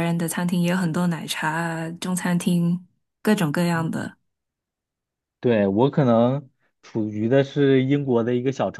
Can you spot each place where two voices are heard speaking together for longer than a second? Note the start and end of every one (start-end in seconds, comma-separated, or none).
none